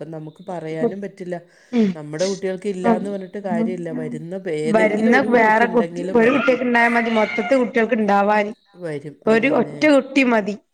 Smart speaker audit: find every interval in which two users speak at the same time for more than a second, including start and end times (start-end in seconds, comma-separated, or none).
none